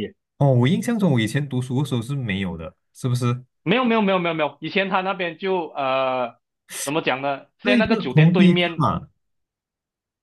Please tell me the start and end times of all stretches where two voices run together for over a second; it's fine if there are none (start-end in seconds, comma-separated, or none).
7.6-8.9